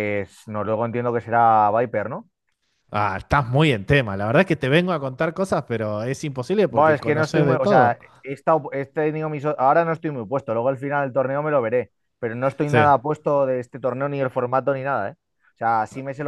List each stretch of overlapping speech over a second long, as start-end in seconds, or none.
6.7-8.0